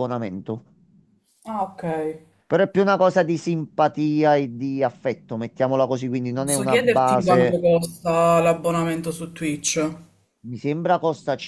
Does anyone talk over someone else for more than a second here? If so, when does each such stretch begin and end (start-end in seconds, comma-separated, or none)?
6.4-7.6